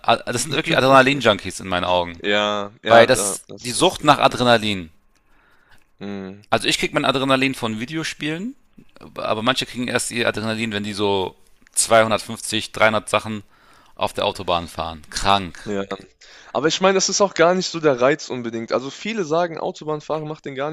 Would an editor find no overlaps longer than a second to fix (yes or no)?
no